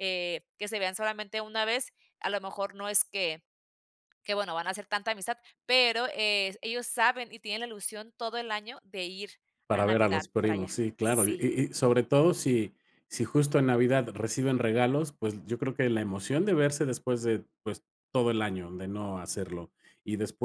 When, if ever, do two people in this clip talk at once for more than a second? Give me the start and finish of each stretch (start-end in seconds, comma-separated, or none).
9.7-11.4